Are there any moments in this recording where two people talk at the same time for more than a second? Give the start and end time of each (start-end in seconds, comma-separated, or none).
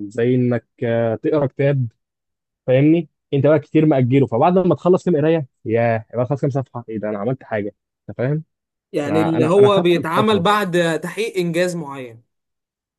9.1-10.5